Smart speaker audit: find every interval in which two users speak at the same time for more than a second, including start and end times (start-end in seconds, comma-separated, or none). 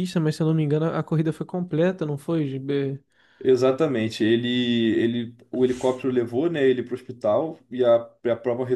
none